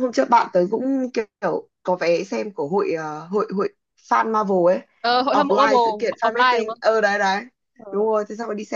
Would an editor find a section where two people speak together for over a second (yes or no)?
yes